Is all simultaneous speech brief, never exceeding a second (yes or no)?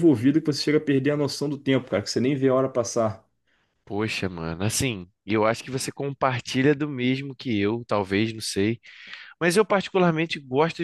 yes